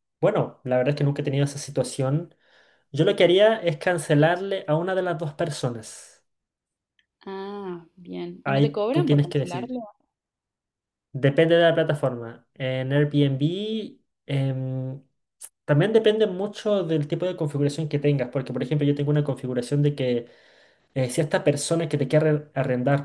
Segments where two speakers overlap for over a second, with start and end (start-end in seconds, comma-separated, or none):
8.4-9.8